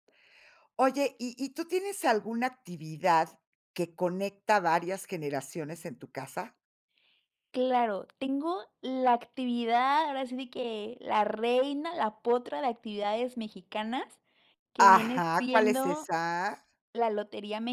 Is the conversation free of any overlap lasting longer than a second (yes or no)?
no